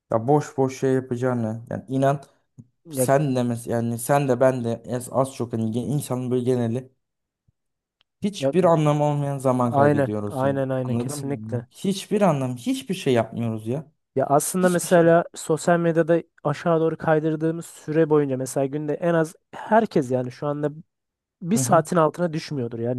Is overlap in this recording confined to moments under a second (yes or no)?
no